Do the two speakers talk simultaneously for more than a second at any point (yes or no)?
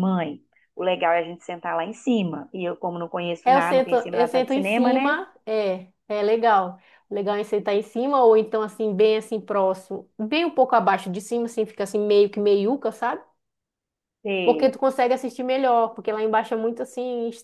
yes